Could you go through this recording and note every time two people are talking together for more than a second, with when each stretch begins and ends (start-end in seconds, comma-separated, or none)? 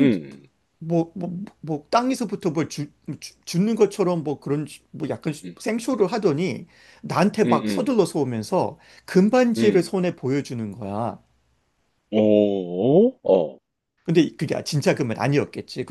none